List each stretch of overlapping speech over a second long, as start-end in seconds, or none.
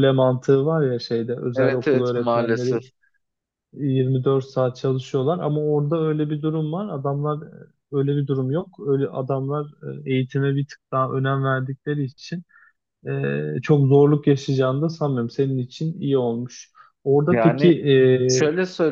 1.5-2.8